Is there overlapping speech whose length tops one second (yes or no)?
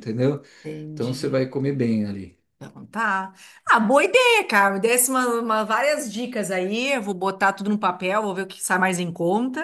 no